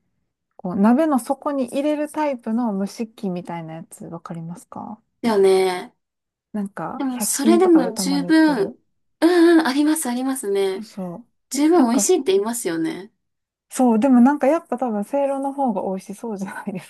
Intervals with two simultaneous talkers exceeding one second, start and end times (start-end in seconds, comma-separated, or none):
6.9-8.7